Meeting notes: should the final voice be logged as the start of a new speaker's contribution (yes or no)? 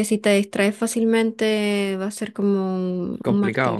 yes